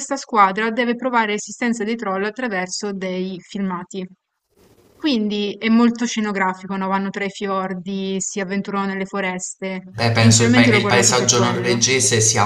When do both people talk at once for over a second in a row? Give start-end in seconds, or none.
10.0-11.8